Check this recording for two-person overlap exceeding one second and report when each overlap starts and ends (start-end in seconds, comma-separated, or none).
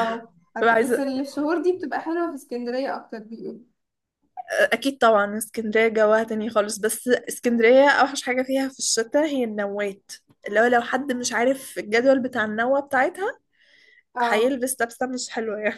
none